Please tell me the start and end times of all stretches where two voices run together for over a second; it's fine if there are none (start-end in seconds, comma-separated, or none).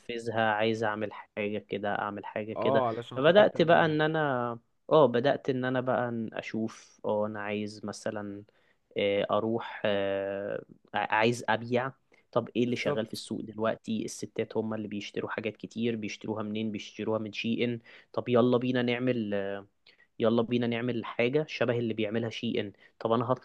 2.6-3.9